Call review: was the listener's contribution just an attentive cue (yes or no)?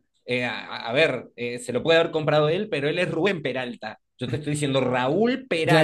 no